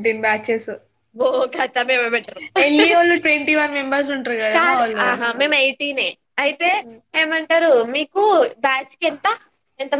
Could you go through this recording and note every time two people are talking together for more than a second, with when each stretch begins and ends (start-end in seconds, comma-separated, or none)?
none